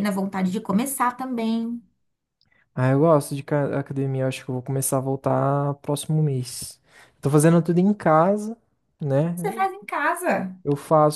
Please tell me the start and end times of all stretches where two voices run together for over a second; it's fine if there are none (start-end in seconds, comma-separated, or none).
none